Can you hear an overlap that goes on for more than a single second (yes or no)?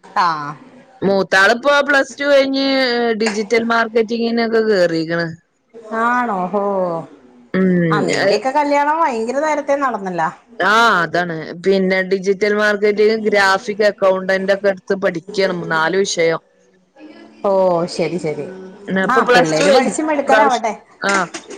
yes